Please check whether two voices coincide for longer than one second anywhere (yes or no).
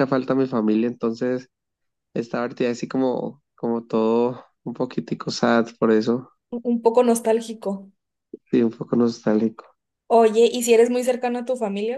no